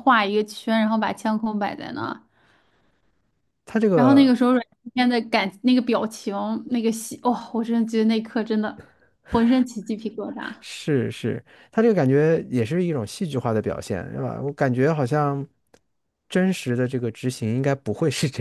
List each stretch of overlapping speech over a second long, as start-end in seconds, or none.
none